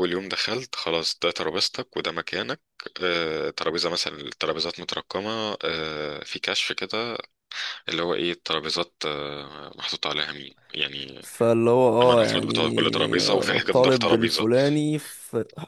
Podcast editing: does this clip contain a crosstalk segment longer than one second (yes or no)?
yes